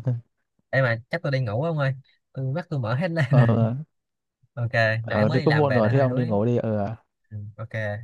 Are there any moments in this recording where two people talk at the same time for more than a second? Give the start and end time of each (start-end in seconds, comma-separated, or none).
5.0-6.4